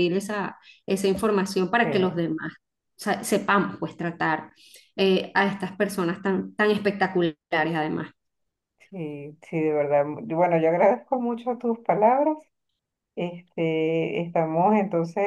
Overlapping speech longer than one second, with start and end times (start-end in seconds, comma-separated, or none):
none